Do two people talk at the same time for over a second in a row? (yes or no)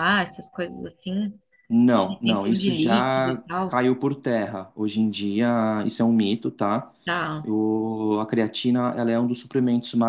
yes